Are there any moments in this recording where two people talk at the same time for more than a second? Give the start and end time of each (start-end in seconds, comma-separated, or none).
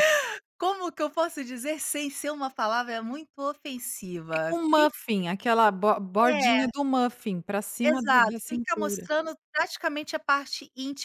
7.8-9.1